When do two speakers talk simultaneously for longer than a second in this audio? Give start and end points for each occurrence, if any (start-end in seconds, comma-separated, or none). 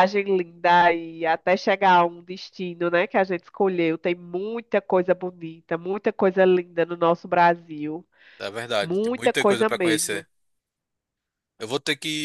8.8-10.2